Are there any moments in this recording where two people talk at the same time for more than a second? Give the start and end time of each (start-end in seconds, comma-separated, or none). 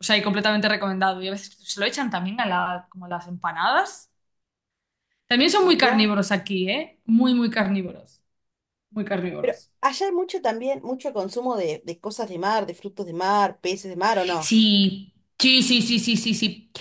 none